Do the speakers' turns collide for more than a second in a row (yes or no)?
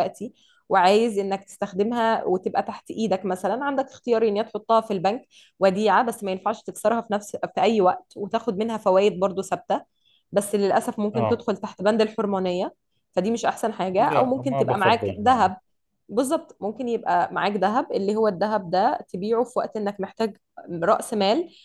yes